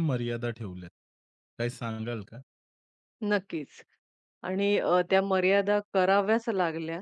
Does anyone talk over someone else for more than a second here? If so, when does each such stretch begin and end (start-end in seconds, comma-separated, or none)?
none